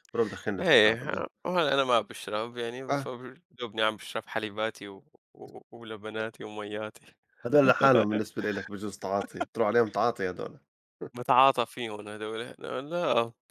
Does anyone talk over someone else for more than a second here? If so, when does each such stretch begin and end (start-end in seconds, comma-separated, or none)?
none